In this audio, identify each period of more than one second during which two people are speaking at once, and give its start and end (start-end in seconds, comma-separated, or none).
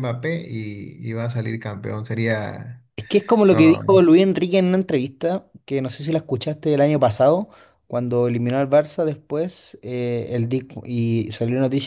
none